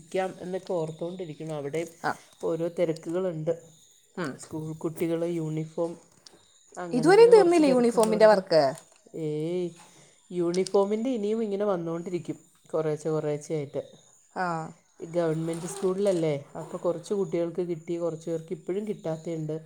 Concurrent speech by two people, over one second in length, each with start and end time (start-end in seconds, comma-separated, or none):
7.0-8.4